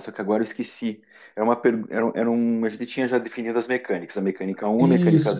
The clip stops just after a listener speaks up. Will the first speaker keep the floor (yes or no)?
no